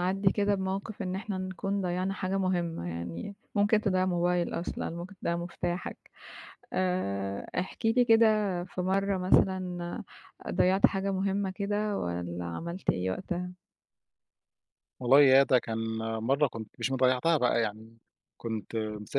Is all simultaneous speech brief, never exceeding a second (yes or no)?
yes